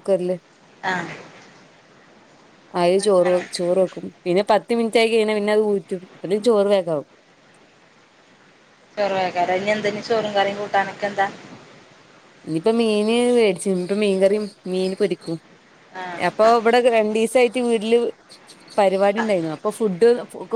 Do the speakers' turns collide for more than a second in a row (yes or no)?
no